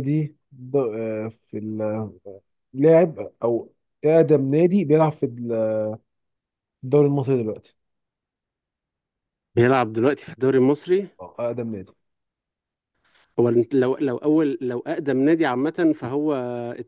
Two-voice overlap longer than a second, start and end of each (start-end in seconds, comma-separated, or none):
none